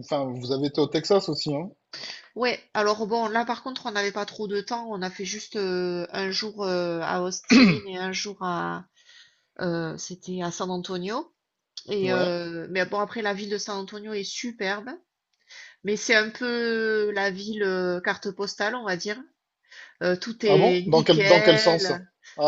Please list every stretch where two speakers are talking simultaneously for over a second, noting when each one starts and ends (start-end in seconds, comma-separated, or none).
20.4-21.9